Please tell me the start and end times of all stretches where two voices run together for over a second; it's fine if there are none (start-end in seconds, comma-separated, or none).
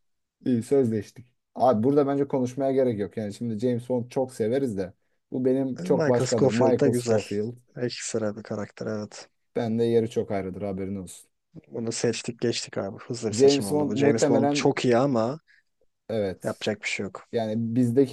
5.9-7.2, 13.3-14.8